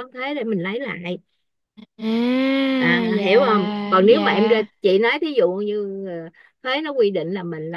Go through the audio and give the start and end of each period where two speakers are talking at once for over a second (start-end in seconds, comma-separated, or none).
2.8-4.6